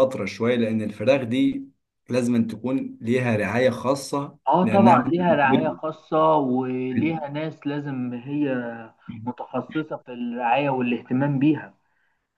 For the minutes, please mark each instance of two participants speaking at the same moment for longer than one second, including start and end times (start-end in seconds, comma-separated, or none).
4.5-5.8